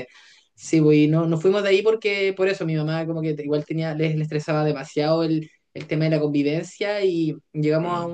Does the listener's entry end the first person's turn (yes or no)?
no